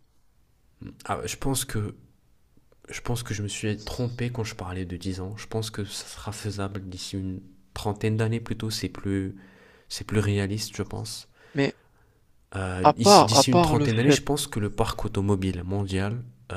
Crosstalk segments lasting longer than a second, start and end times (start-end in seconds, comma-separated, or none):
12.8-14.2